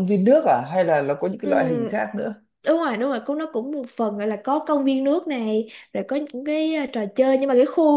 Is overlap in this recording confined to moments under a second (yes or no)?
yes